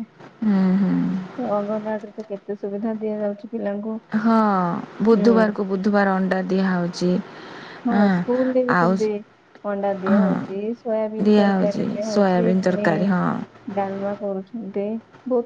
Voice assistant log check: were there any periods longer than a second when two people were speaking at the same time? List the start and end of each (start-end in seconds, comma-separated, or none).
11.2-12.9